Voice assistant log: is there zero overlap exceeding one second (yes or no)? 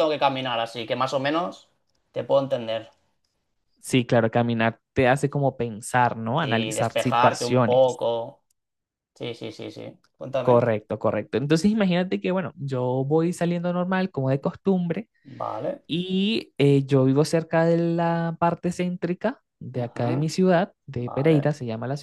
no